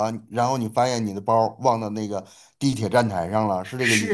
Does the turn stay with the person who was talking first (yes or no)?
no